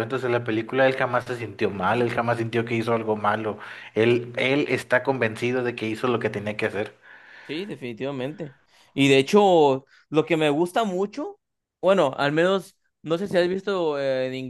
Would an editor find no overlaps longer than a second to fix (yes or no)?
yes